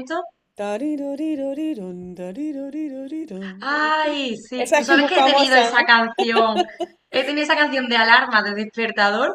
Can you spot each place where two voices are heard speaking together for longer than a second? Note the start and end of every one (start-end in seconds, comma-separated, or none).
4.6-5.9